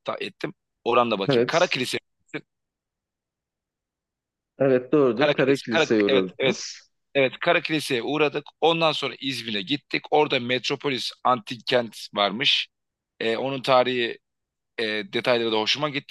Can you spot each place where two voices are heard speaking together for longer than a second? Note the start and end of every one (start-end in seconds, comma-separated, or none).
5.2-6.6